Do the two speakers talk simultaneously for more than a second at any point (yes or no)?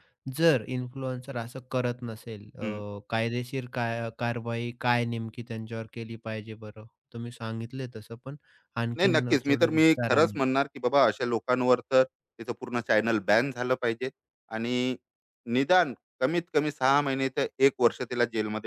yes